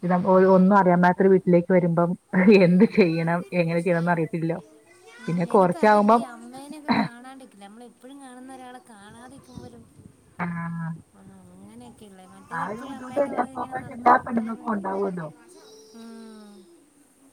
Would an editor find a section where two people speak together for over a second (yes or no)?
yes